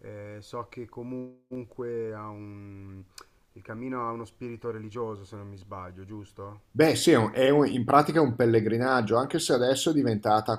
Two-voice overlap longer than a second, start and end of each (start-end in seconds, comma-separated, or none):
none